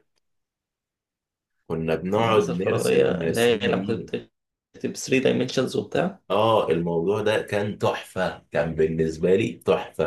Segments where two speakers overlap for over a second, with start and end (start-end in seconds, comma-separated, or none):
2.1-4.1